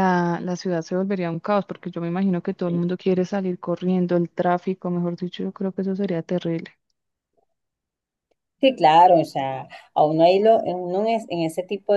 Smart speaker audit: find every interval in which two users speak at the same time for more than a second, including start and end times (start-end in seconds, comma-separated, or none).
none